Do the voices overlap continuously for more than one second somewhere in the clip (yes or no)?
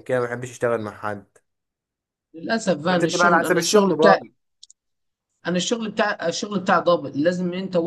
yes